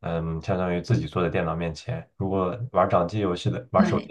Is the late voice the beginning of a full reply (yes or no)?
no